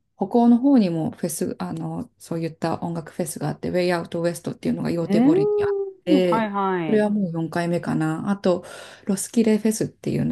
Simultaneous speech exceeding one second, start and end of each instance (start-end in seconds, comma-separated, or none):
5.0-7.1